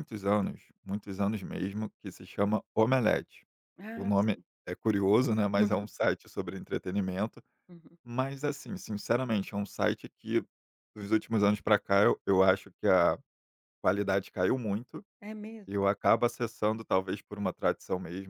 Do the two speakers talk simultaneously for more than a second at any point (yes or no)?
no